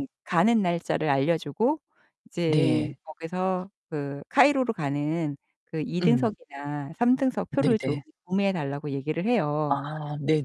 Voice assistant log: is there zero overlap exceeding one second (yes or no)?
yes